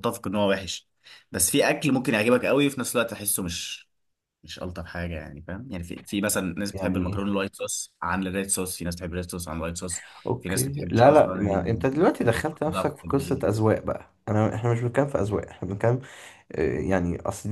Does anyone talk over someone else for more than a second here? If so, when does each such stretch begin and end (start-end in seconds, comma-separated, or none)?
10.4-13.4